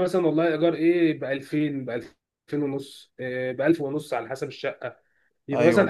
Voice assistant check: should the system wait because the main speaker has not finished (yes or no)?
yes